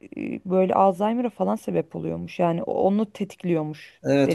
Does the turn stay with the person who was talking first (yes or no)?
no